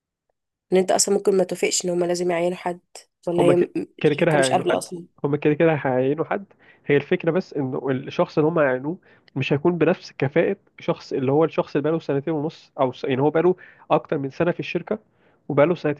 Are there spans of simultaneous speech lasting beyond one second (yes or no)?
yes